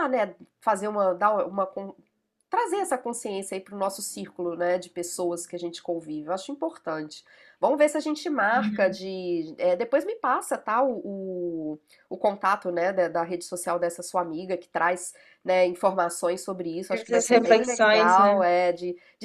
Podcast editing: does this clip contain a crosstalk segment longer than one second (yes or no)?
yes